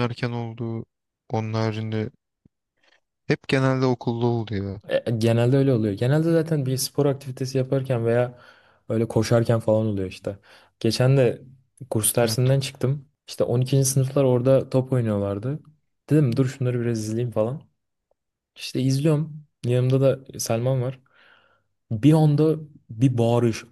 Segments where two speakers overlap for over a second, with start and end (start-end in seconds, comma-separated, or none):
none